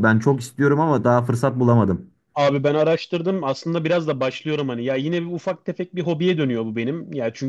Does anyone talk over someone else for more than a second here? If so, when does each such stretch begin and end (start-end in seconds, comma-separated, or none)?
none